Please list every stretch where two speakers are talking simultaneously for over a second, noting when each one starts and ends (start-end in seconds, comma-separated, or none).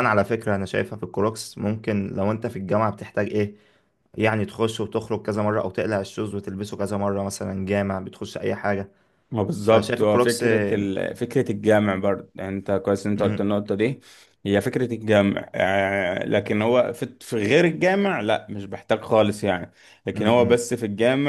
9.6-10.9